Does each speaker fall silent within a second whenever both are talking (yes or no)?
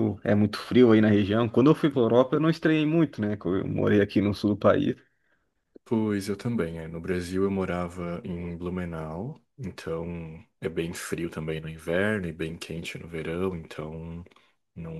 yes